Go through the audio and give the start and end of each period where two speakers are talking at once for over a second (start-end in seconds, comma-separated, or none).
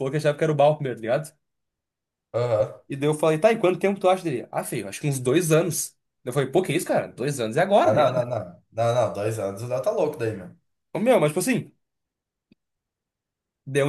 none